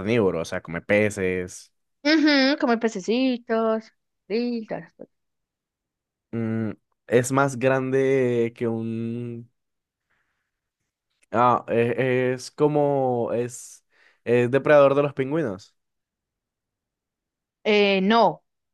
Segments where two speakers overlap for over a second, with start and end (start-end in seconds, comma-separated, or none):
none